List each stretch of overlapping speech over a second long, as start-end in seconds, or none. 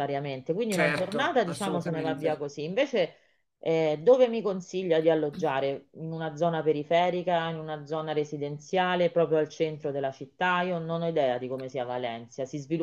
0.7-2.5